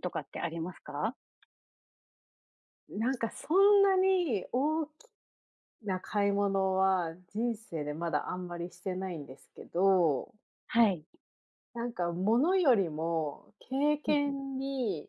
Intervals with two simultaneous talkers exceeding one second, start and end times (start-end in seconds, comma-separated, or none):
none